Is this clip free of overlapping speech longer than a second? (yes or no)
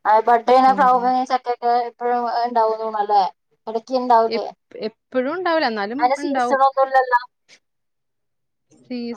yes